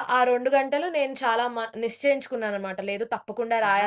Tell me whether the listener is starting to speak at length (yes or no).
no